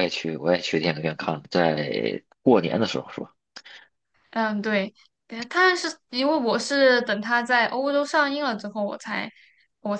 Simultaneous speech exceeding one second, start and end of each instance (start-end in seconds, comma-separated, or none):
none